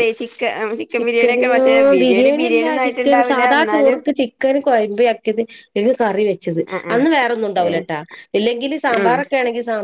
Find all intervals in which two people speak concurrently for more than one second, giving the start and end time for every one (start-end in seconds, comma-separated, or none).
2.0-4.0